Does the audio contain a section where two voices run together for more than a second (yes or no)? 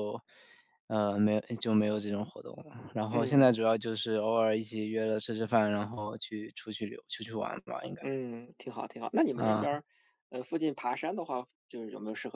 no